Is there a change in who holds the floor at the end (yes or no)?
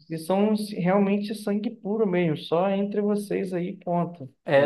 yes